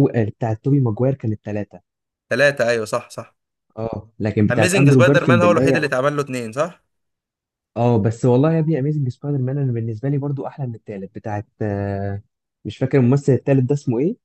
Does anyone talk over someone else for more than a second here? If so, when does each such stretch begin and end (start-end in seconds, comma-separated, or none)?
4.5-5.9